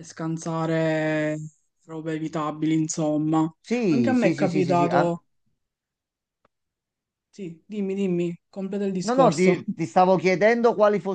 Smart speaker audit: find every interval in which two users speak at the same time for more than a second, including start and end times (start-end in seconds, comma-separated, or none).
3.9-5.2